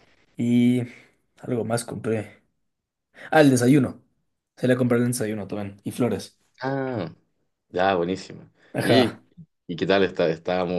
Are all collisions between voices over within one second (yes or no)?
yes